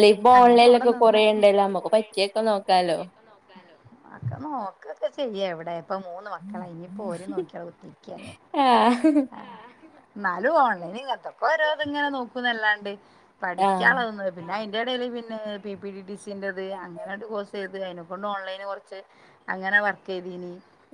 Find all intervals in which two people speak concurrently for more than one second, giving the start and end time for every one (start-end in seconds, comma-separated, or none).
none